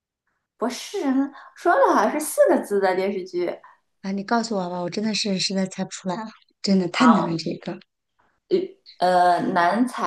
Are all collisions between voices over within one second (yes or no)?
yes